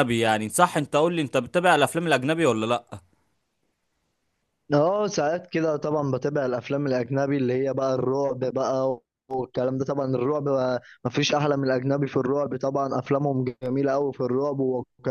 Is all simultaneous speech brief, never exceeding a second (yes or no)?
yes